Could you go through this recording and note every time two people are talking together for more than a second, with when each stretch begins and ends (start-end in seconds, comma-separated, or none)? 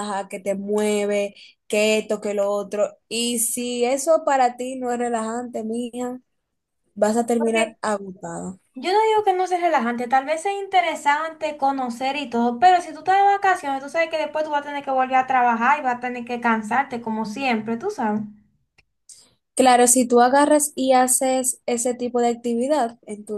none